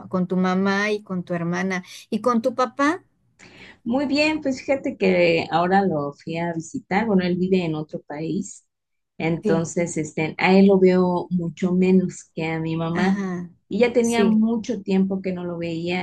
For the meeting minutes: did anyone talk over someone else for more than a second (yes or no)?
no